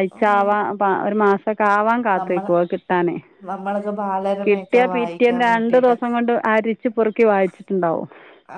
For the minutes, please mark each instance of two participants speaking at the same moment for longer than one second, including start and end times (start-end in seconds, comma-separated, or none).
4.4-6.0